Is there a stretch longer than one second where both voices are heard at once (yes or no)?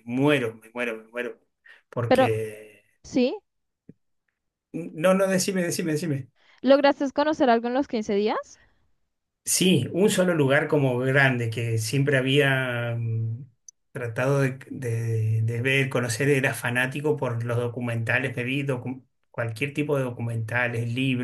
no